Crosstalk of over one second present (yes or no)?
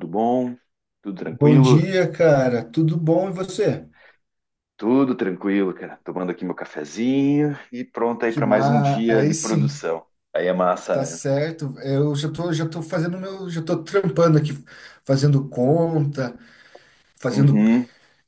yes